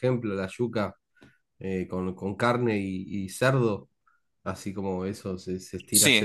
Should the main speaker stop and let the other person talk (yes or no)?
yes